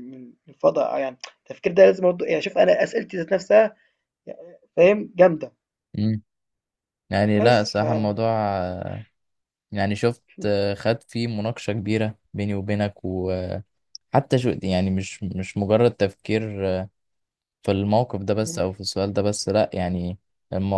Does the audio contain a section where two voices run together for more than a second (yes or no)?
no